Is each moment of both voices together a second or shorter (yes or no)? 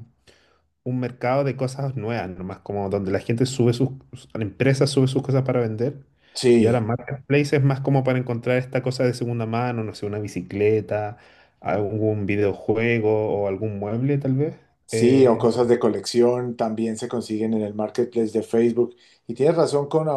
yes